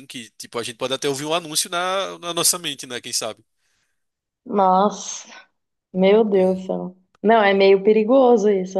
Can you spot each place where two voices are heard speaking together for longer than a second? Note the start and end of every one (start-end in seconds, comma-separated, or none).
none